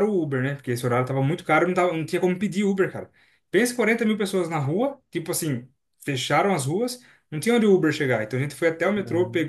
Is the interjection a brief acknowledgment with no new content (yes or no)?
yes